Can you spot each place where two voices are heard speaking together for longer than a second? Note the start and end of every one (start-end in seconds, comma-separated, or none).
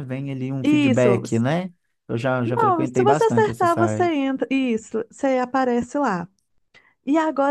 2.4-4.1